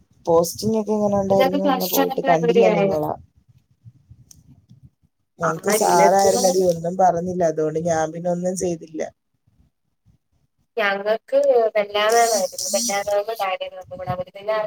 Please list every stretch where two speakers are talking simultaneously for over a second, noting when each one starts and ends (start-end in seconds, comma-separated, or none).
1.3-3.0